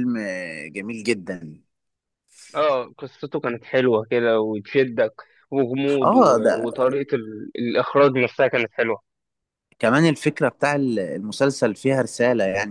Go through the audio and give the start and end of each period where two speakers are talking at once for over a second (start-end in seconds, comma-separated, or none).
none